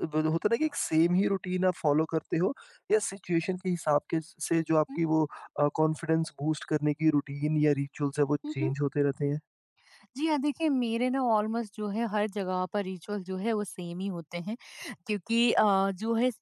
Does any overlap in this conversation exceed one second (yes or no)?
no